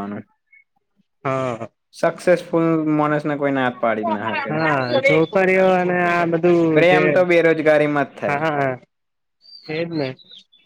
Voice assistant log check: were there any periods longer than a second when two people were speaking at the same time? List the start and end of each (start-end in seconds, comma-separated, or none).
none